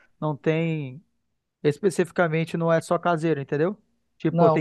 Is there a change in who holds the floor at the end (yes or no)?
yes